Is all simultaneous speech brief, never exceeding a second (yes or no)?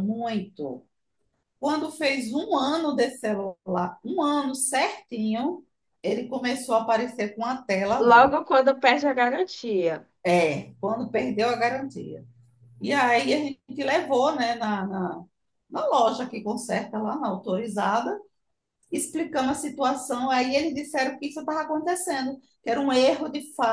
yes